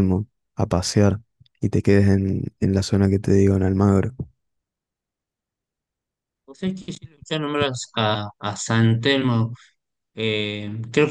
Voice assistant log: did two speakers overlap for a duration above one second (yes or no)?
no